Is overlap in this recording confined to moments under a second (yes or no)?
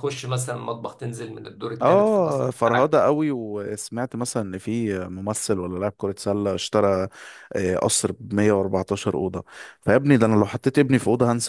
no